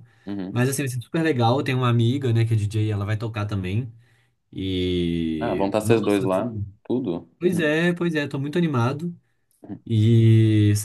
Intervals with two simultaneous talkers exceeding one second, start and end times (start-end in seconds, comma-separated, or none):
5.4-6.6